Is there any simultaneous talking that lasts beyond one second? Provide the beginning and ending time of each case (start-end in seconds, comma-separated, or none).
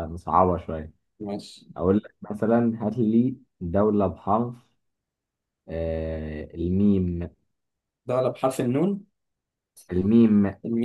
none